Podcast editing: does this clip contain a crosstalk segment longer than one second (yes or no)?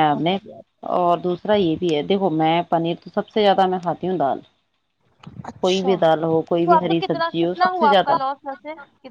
yes